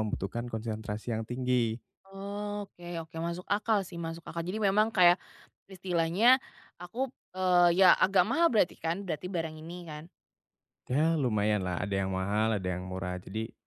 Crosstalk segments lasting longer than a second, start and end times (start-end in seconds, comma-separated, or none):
none